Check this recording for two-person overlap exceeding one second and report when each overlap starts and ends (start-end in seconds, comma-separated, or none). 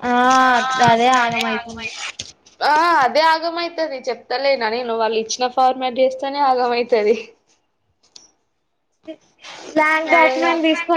none